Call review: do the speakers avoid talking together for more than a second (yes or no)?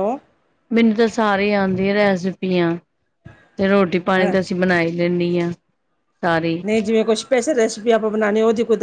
yes